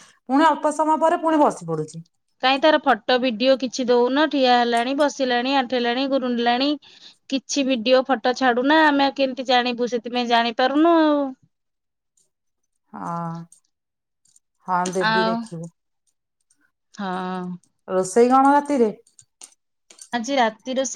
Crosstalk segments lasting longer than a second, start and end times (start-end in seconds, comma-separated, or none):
none